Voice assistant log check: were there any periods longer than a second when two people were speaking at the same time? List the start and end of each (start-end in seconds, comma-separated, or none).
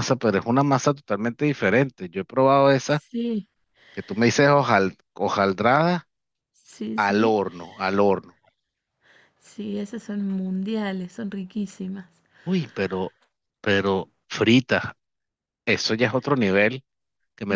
none